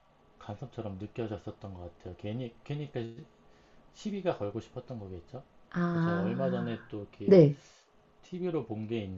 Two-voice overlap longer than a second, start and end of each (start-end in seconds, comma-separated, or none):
5.9-7.4